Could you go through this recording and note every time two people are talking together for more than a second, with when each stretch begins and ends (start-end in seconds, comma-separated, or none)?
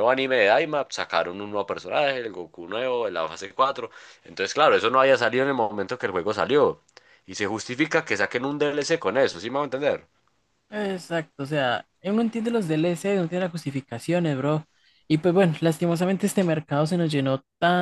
none